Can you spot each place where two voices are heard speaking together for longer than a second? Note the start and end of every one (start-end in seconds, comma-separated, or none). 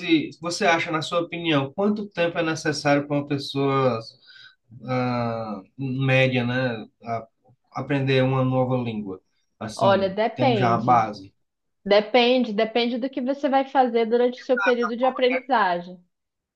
9.8-11.1